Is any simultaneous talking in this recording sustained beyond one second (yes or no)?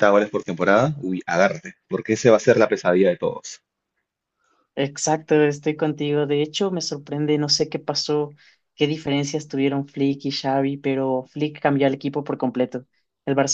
no